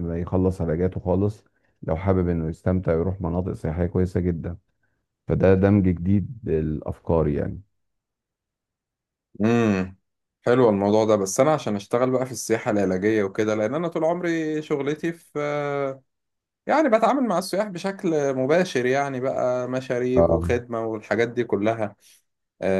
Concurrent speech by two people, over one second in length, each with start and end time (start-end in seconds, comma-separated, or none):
none